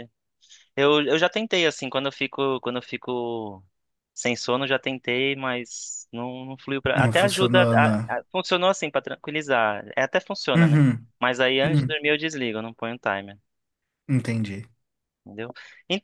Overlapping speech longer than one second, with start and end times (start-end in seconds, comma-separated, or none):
6.9-8.2